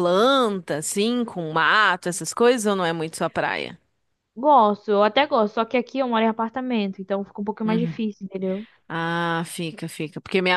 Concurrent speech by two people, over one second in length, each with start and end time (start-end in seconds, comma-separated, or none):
none